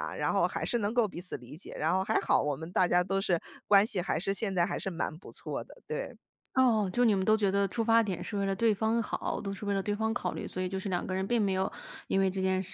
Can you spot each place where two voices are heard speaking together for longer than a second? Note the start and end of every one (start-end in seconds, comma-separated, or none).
none